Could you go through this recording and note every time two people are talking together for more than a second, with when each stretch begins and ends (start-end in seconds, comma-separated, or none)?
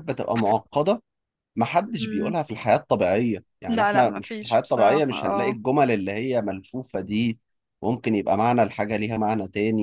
3.7-5.6